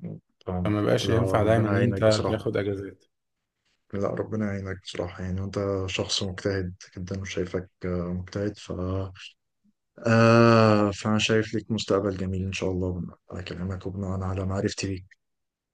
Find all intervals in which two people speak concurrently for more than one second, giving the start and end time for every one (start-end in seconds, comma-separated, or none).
0.6-2.4